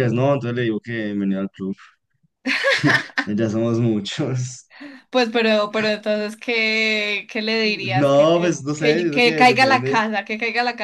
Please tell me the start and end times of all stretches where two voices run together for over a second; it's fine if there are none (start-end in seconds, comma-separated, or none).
7.6-10.0